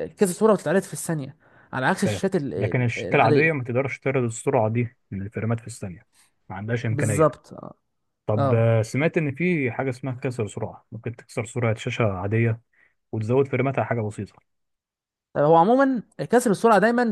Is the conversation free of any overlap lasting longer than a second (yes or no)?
no